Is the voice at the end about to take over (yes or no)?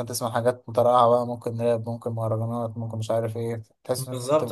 yes